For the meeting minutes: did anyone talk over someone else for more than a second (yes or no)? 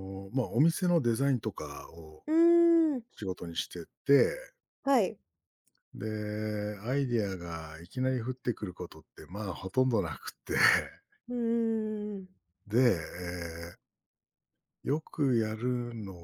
no